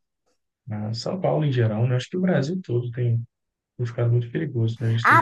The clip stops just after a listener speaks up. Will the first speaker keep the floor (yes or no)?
no